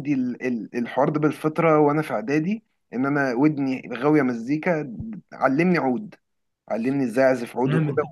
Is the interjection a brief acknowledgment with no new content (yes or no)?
no